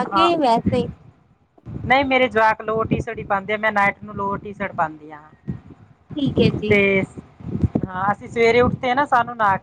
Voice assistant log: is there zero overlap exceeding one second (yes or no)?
yes